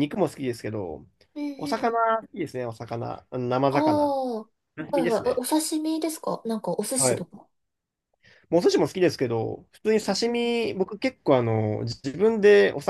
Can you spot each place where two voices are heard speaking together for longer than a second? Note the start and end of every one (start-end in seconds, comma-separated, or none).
none